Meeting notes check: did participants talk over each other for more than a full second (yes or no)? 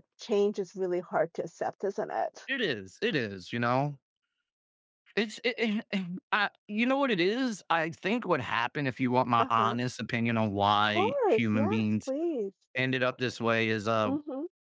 yes